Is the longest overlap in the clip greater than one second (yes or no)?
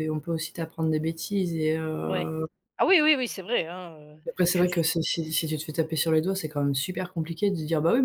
no